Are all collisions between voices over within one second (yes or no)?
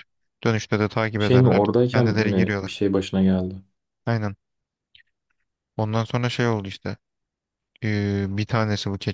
no